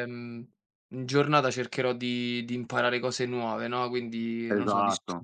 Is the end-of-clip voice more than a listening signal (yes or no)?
no